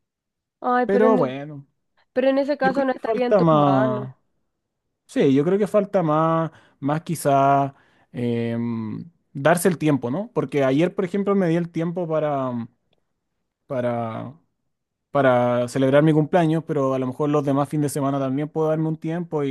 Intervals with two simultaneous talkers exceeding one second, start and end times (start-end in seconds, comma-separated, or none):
2.6-4.1